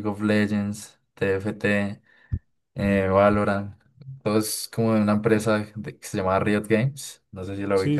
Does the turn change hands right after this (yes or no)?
yes